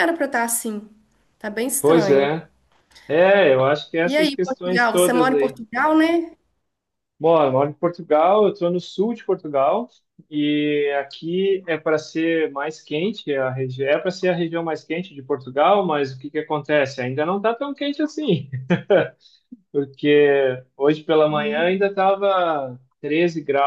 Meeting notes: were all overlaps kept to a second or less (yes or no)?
no